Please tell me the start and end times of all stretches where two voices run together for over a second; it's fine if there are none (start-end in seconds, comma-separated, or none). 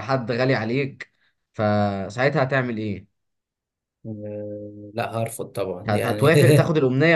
none